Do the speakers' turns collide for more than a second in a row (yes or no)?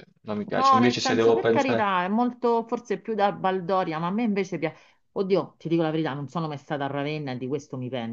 yes